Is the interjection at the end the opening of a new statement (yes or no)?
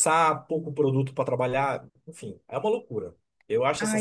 yes